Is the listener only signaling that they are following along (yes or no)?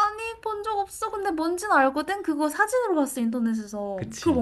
no